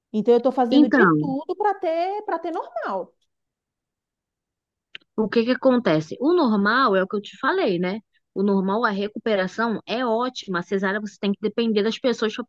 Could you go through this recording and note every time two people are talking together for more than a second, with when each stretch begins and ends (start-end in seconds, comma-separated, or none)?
none